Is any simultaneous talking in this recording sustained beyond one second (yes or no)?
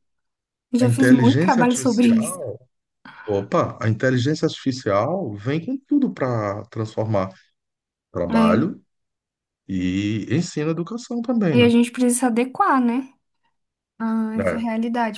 yes